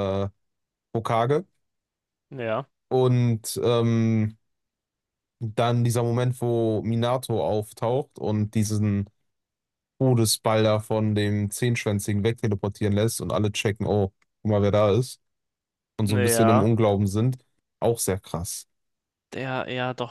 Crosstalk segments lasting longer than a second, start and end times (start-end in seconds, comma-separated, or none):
none